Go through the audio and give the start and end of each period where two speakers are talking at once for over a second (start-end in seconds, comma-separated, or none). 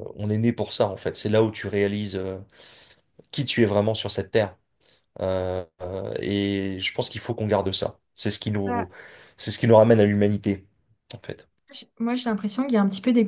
none